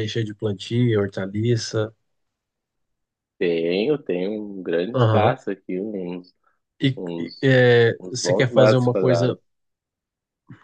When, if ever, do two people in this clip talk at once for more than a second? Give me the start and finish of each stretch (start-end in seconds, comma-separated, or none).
8.1-9.4